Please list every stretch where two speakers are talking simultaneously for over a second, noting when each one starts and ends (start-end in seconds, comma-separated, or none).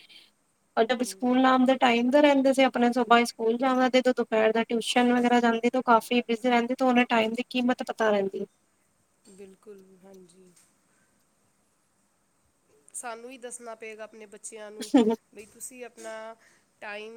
none